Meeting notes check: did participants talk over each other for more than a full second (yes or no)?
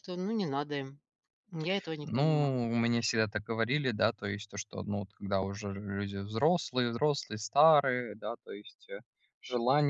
yes